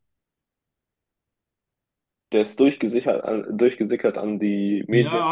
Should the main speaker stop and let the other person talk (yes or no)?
yes